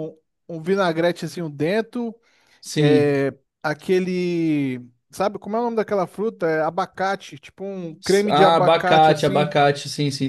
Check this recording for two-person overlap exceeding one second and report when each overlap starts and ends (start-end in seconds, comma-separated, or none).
8.3-9.6